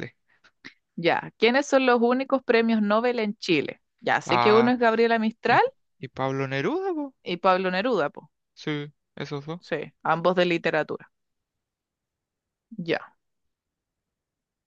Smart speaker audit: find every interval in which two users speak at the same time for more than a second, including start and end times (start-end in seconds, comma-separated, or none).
none